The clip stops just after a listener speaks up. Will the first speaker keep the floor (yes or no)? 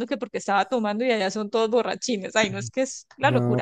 no